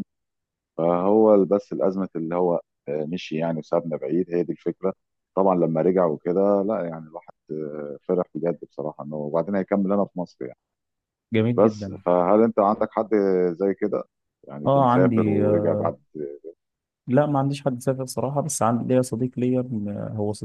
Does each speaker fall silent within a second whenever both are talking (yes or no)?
no